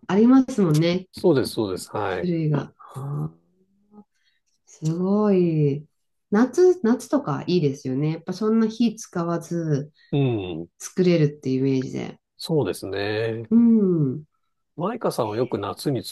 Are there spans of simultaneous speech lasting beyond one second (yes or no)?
no